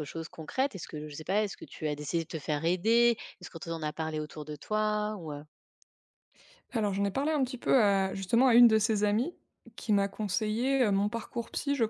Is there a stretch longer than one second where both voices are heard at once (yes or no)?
no